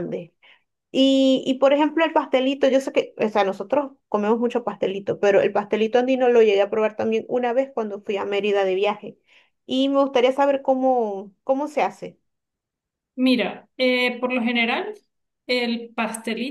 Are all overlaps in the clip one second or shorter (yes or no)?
yes